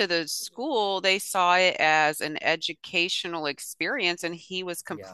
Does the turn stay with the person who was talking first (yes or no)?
yes